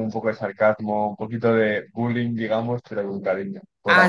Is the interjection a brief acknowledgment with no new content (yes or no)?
no